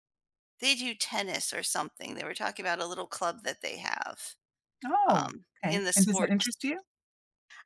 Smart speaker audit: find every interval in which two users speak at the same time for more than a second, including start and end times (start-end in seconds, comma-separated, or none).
5.1-6.6